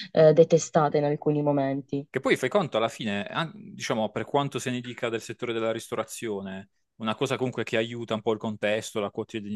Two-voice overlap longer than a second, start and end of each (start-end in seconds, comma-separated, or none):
none